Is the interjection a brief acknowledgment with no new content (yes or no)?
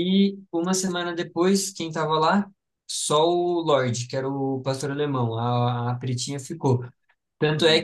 yes